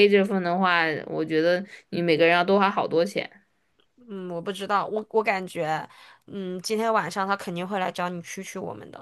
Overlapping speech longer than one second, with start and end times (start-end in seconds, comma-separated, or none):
none